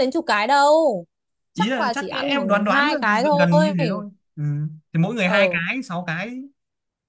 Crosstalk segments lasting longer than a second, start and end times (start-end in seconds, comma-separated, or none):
1.5-3.7